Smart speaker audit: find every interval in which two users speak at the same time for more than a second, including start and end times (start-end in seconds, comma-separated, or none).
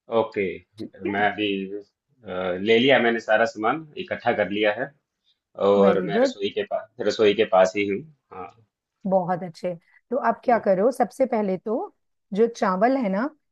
none